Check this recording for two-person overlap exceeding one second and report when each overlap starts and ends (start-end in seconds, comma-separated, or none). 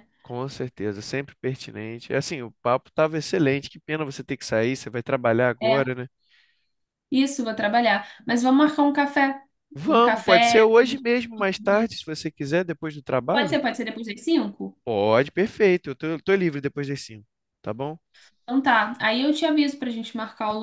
9.9-11.9